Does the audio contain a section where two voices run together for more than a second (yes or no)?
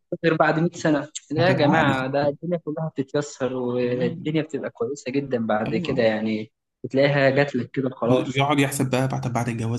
no